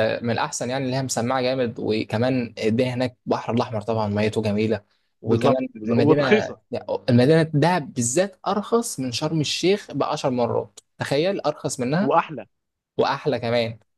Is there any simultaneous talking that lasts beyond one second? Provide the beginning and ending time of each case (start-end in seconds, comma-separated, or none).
5.3-6.6